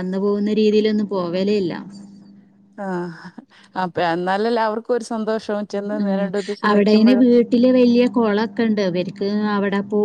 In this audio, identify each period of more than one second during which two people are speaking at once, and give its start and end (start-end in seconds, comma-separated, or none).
none